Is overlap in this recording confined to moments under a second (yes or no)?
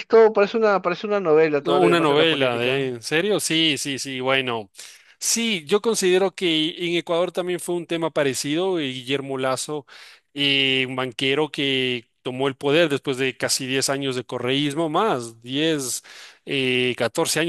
no